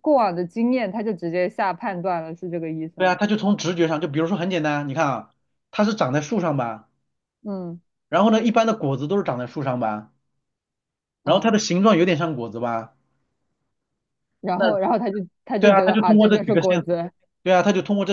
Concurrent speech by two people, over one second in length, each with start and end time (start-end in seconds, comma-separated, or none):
15.6-17.0